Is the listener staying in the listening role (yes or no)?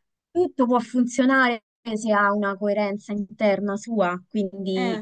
yes